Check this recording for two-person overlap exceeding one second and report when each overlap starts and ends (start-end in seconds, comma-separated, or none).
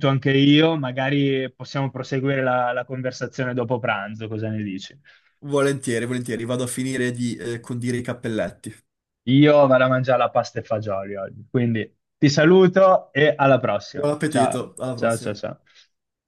13.9-15.4